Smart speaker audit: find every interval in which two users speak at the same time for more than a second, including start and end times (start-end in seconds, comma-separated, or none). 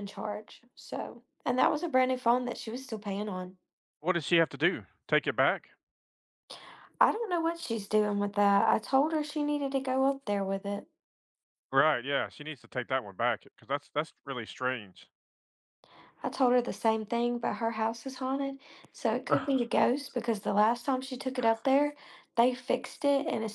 none